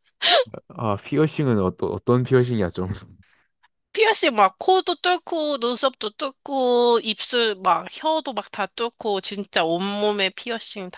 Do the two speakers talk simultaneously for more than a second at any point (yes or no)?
no